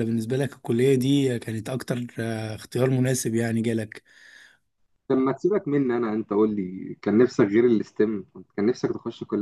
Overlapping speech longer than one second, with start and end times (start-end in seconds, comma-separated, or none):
none